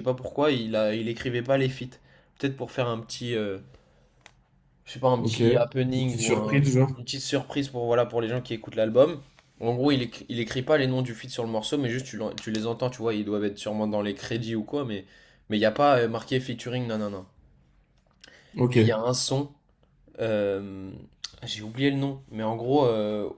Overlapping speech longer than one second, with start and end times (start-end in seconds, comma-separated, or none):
5.2-6.9